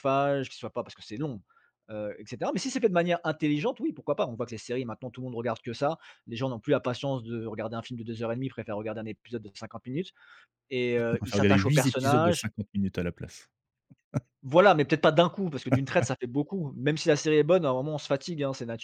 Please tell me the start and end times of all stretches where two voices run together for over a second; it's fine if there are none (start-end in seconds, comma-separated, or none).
11.2-12.5